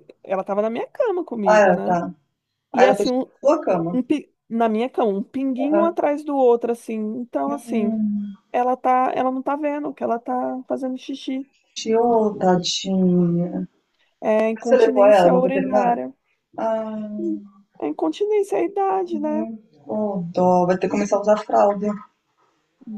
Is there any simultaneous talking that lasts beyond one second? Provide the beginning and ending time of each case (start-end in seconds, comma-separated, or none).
14.5-16.0